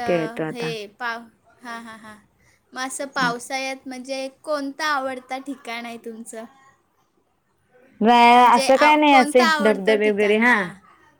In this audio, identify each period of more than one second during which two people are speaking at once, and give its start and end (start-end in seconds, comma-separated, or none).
8.3-10.5